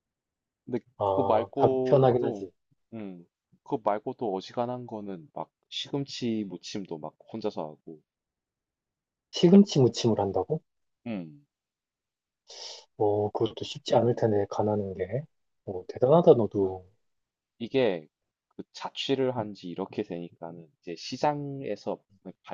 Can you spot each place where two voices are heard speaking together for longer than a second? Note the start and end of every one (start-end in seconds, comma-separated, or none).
1.0-2.5